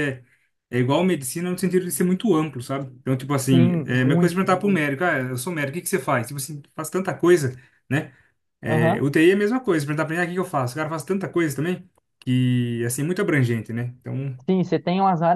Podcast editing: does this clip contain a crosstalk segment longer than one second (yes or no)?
yes